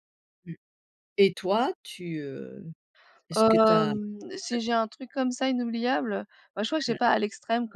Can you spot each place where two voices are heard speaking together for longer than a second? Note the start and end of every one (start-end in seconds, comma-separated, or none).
3.3-4.7